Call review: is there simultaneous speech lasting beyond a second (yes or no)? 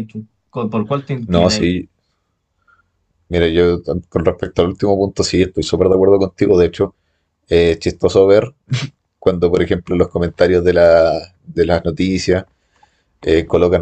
no